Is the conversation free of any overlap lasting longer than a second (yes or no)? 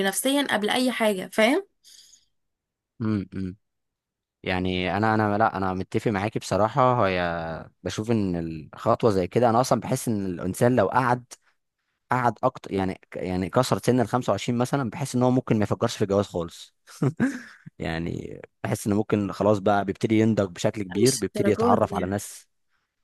no